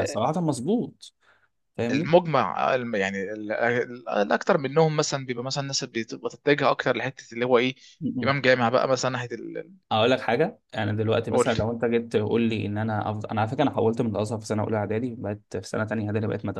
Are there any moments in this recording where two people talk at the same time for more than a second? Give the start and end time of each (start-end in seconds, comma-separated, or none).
none